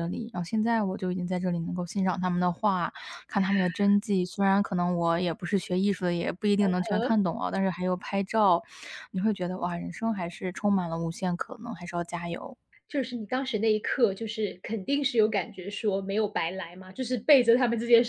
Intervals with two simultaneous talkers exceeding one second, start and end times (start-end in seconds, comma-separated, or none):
none